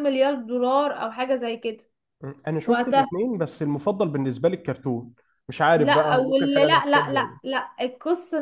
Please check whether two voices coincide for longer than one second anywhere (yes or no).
yes